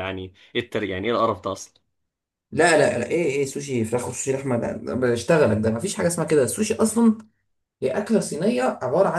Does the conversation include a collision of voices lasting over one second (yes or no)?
no